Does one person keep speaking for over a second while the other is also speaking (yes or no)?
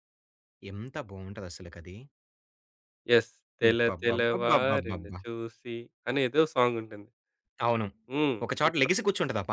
yes